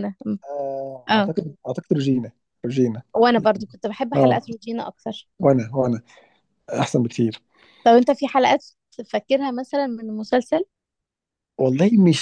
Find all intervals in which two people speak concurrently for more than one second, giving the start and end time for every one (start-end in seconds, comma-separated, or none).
none